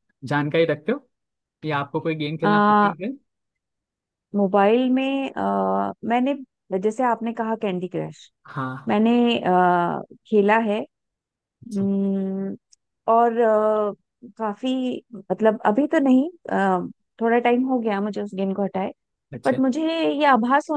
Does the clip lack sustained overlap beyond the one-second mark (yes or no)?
yes